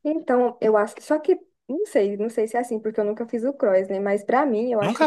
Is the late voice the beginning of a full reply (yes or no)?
no